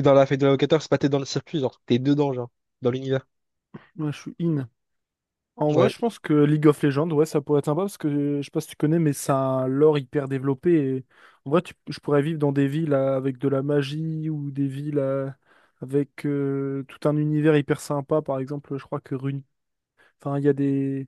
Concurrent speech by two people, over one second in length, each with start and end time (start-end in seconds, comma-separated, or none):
none